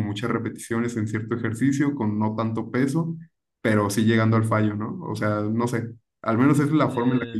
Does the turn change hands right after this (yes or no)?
no